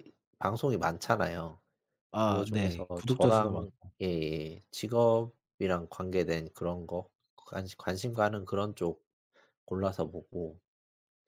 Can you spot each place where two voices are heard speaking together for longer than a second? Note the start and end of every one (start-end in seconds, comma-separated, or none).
2.2-3.7